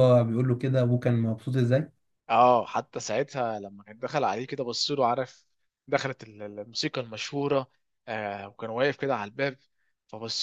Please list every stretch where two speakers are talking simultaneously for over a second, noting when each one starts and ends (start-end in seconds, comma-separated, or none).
none